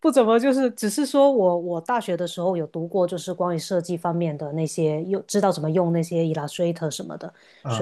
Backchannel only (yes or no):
yes